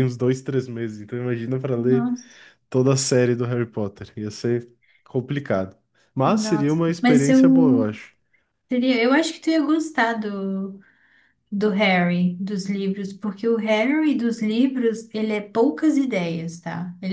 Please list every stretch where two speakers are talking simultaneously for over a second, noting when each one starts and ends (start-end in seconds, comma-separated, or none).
6.2-7.8